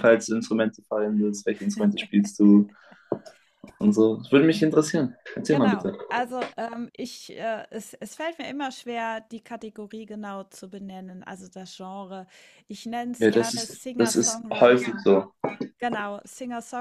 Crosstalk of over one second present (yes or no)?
yes